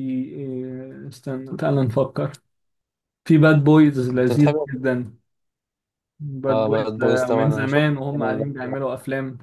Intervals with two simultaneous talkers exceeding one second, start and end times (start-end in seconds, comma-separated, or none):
6.5-8.8